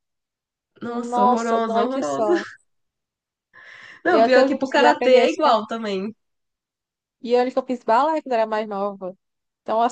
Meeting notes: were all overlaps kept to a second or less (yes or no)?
no